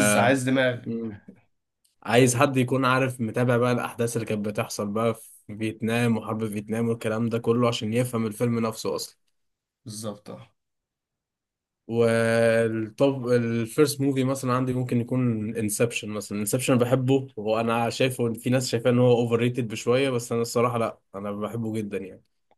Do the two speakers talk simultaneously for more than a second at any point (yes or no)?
no